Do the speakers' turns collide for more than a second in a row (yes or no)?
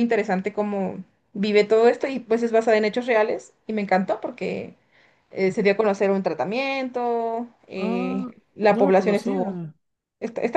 yes